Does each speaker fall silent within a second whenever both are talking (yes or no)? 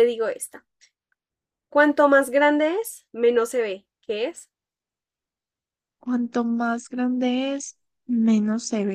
yes